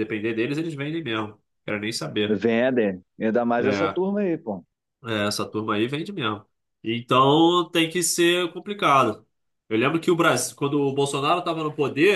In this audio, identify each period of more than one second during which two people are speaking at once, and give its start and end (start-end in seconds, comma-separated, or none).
none